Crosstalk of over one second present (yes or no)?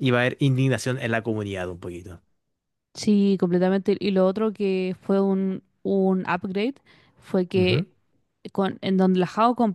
no